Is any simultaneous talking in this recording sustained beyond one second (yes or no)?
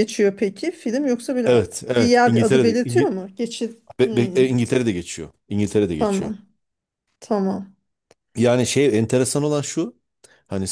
yes